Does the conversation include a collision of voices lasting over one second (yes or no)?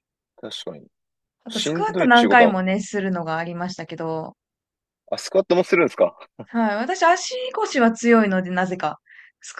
yes